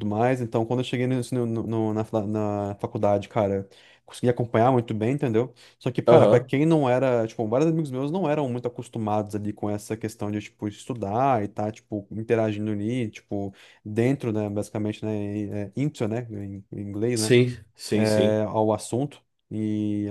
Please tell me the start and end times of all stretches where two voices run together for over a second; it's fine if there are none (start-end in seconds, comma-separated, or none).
none